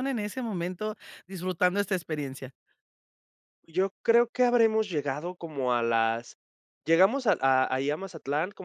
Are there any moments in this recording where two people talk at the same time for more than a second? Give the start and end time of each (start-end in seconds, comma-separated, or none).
none